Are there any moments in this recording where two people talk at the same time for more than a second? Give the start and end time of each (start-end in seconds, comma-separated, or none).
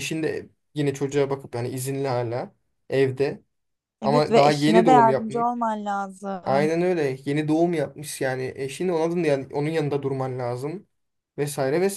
4.0-5.5